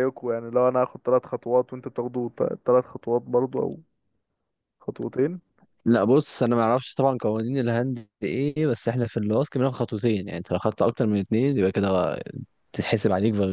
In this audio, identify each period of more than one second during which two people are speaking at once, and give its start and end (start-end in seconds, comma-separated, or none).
none